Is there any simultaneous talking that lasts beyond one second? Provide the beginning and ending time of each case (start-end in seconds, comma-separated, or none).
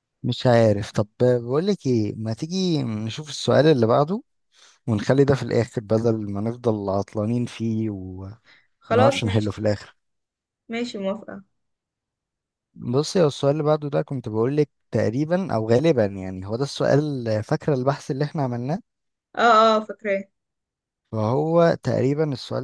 none